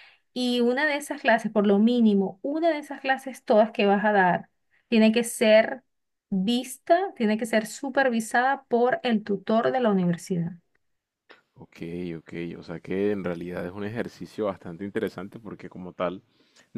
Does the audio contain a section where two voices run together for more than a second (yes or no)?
no